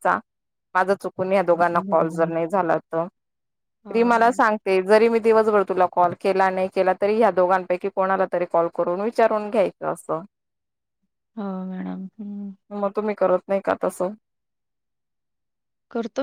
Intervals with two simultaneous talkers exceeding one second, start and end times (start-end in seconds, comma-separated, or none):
none